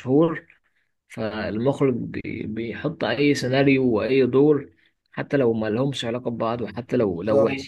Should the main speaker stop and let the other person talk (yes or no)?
no